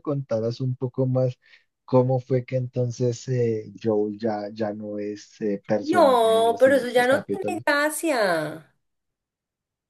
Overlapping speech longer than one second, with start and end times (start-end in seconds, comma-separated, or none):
5.8-7.6